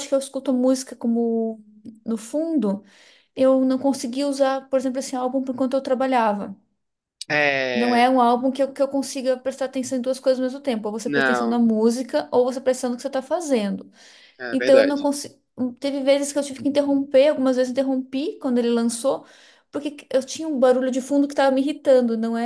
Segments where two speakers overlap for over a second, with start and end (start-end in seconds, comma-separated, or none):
none